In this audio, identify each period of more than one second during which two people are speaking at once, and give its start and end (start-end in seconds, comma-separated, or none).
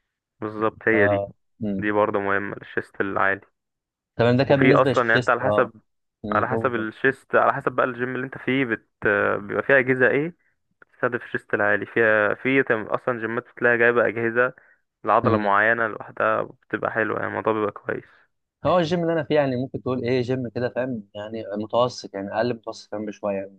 4.5-5.7